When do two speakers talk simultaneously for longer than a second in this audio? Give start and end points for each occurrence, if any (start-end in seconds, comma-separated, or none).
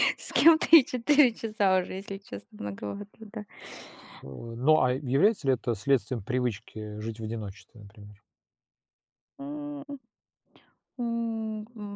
none